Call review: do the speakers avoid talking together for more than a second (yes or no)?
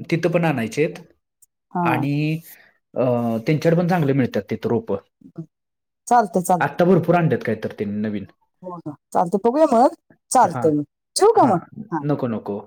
yes